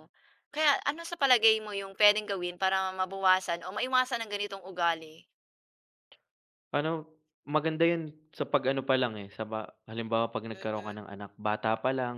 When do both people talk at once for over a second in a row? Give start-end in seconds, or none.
none